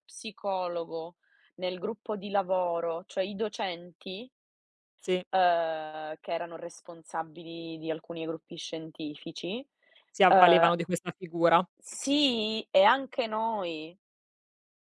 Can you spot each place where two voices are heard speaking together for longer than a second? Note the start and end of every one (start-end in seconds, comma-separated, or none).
none